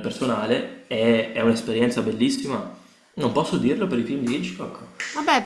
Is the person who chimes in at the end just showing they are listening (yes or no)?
no